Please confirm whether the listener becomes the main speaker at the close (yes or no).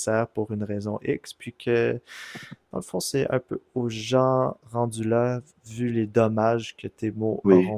no